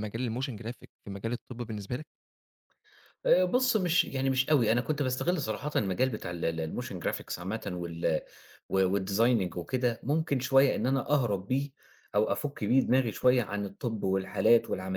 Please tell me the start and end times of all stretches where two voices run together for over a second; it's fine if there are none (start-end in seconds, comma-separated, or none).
none